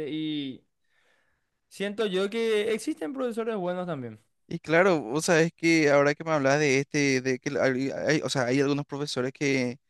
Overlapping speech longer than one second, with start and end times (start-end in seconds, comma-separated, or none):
none